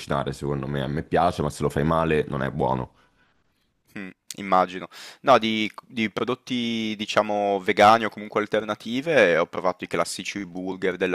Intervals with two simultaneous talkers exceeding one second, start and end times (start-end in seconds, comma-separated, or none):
none